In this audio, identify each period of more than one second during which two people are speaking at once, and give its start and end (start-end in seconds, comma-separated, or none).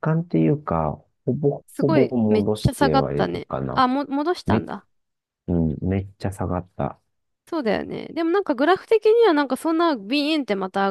1.7-3.9